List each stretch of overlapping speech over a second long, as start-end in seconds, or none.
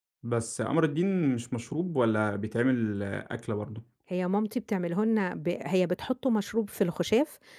none